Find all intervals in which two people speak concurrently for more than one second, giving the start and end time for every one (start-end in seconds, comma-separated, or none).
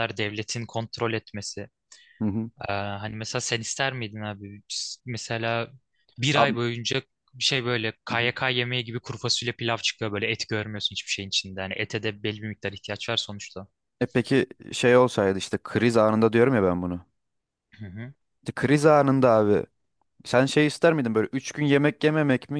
none